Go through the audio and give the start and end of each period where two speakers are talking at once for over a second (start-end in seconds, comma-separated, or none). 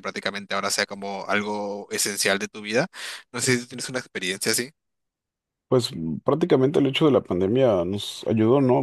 none